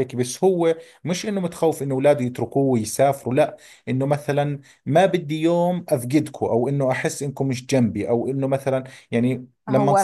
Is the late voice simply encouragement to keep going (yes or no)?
no